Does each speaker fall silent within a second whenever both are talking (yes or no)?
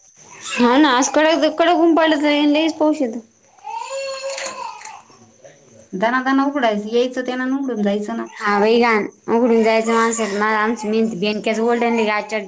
yes